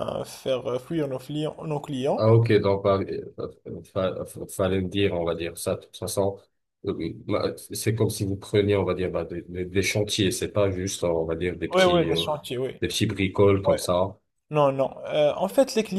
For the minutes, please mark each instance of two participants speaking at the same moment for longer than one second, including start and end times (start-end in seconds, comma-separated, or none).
none